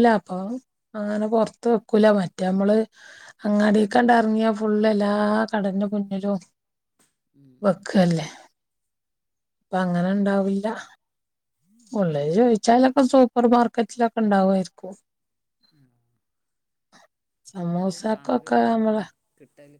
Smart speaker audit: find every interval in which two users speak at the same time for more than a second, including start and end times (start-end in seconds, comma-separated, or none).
17.7-19.0